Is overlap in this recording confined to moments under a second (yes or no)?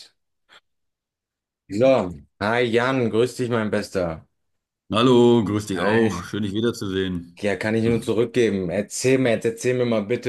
yes